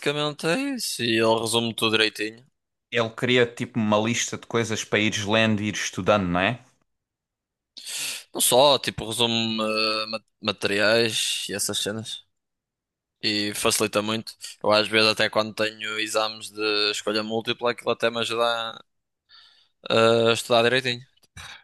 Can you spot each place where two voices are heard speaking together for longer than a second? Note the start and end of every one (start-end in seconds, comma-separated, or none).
none